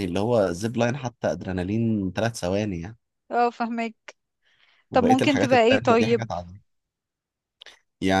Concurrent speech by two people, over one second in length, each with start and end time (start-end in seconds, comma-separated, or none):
4.9-6.3